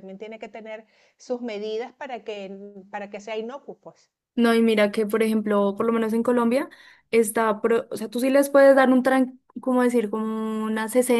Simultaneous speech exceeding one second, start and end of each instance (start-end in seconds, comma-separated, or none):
none